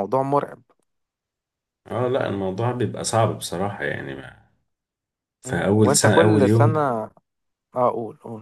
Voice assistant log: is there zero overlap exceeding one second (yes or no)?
no